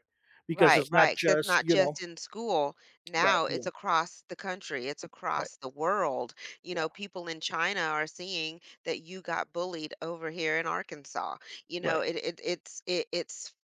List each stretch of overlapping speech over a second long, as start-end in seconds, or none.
0.5-2.0